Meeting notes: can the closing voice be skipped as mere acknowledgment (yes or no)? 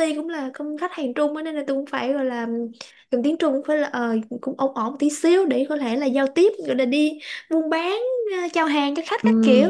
no